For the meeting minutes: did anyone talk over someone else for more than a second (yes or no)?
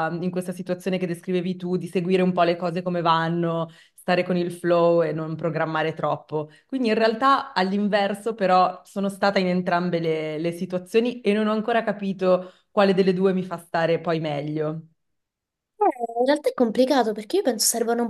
no